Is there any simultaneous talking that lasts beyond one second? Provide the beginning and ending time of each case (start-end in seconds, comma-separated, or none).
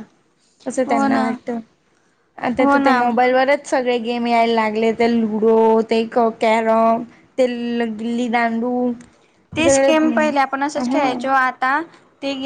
none